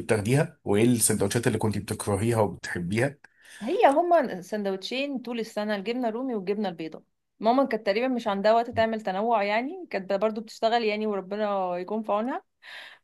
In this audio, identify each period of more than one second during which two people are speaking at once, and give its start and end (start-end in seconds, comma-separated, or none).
none